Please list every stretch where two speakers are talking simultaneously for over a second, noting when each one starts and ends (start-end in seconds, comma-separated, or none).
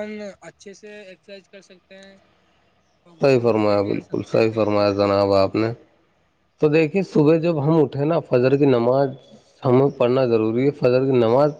3.2-5.1